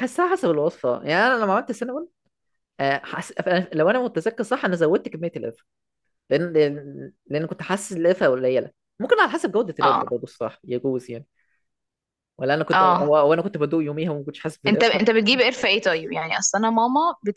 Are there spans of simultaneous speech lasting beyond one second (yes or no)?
no